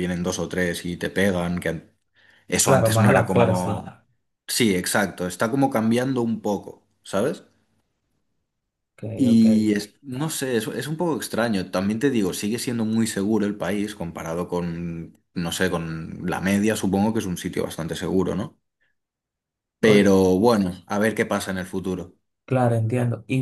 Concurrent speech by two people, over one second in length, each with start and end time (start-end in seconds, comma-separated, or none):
2.6-3.8